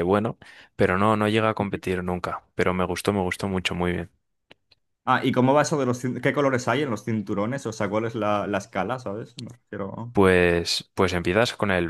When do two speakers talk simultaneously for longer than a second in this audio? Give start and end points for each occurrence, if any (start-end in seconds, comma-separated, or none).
none